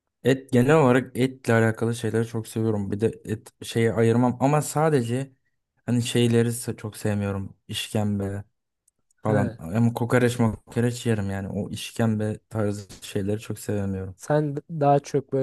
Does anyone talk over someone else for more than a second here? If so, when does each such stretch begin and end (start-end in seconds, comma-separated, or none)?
none